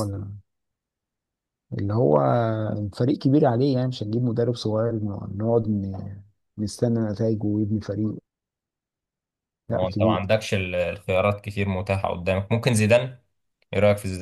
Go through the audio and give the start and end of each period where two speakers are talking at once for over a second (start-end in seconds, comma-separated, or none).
none